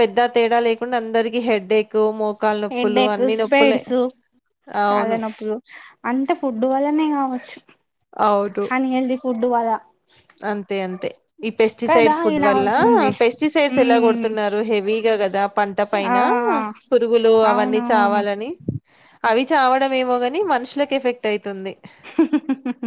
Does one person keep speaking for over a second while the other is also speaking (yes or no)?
no